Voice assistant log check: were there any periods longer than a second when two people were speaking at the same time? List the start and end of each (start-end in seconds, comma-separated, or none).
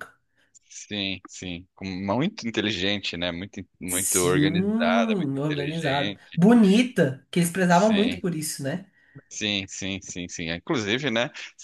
3.9-6.4